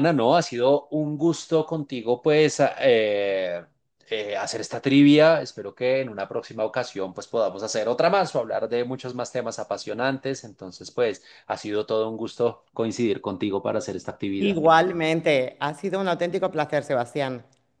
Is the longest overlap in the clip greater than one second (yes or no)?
no